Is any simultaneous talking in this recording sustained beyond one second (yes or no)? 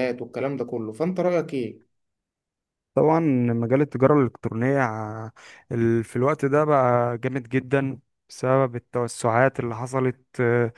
no